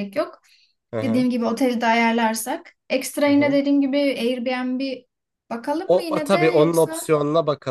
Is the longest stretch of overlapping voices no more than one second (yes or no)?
no